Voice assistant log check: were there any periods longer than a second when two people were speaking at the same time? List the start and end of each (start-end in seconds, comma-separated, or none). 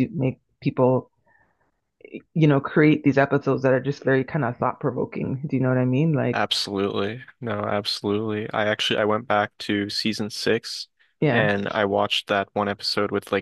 none